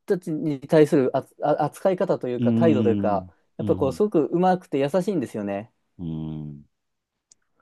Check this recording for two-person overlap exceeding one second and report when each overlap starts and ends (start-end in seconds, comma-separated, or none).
2.4-4.0